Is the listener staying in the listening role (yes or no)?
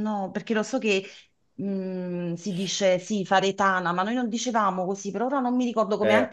no